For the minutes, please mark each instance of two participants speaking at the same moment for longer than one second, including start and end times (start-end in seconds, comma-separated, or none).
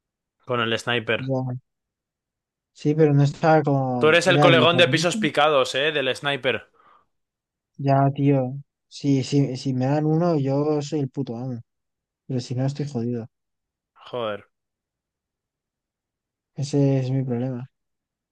4.0-5.2